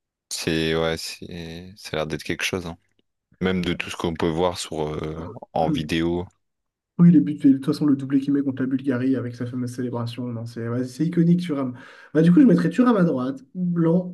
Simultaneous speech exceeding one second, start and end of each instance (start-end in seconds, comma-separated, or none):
none